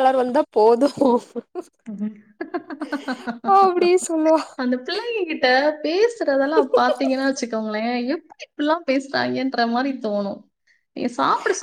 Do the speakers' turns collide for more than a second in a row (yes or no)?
no